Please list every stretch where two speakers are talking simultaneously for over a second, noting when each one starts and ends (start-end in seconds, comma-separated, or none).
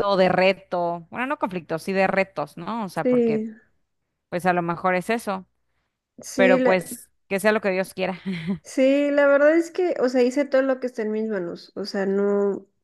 none